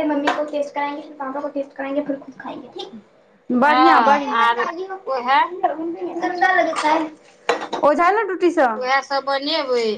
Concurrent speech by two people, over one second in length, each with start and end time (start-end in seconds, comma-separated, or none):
3.6-5.0